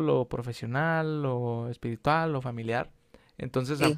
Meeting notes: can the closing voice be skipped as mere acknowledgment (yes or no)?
yes